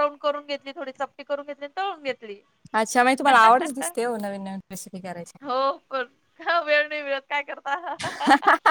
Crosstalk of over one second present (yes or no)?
no